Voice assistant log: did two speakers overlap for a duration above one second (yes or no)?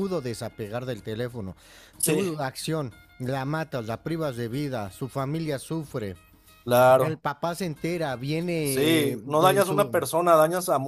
yes